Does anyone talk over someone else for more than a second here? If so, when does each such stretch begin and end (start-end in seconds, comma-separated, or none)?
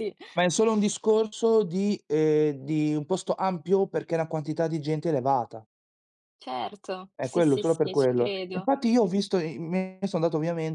7.2-8.7